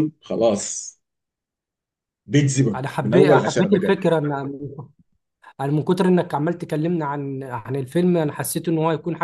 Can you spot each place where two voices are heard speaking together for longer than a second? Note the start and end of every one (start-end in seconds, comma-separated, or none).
2.7-4.0